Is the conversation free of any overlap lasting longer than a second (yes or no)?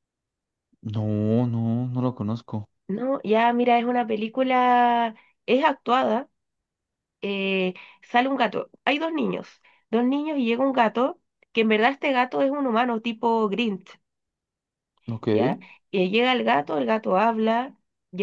yes